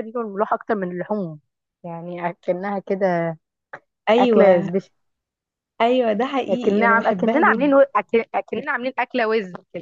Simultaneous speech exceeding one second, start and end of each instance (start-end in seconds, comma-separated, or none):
6.5-7.8